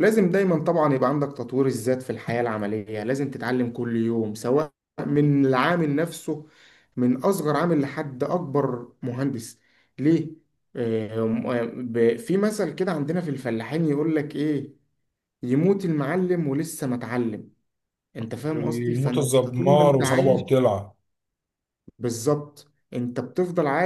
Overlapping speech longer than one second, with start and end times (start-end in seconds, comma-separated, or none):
18.5-20.4